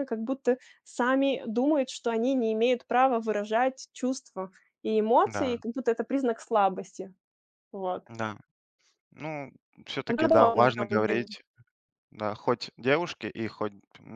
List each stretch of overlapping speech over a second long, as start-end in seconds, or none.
10.1-11.3